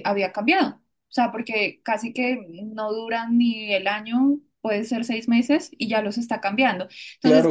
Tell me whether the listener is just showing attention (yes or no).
no